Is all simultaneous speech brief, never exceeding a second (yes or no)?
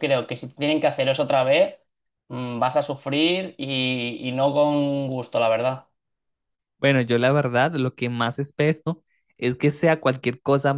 yes